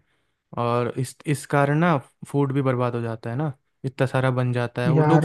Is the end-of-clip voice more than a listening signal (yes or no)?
no